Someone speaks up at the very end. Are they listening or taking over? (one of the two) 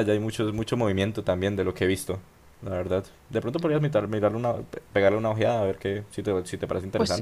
taking over